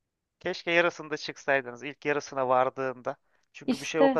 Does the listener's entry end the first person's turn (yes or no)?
no